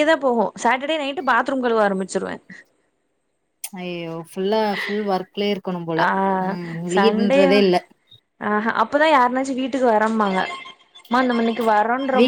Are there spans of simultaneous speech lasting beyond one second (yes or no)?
no